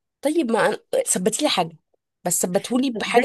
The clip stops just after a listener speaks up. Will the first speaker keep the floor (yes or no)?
no